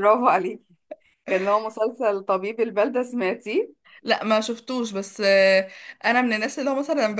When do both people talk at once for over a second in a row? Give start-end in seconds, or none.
none